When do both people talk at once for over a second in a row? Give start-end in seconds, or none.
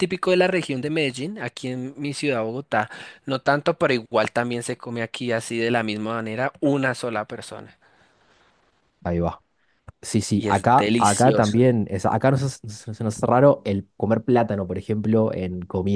10.3-11.6